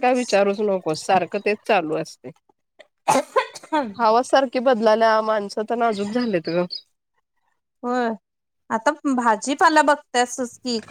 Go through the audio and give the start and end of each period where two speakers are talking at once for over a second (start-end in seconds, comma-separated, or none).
none